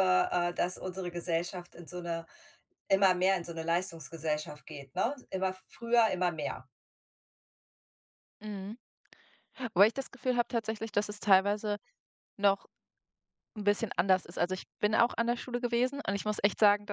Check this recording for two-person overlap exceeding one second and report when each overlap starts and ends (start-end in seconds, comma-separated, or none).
none